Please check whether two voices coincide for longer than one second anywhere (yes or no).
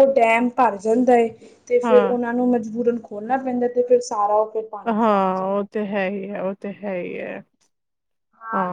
no